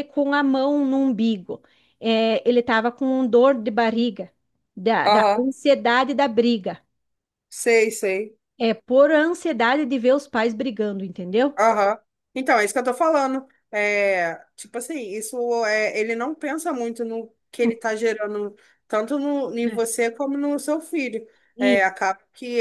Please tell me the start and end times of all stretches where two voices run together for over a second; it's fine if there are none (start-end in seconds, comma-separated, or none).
none